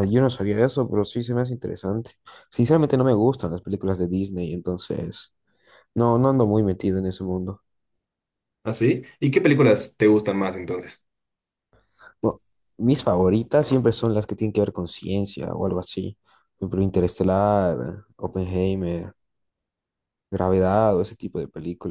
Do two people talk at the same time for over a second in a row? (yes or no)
no